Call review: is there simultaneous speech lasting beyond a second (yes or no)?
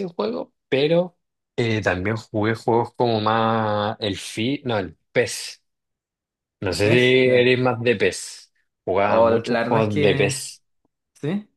yes